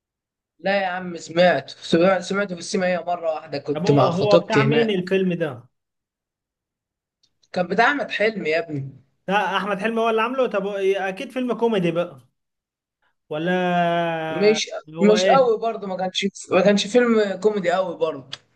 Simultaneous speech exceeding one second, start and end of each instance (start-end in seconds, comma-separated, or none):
3.7-5.1